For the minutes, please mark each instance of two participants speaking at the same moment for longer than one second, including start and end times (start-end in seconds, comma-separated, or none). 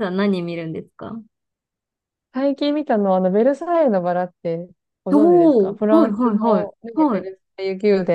5.1-7.3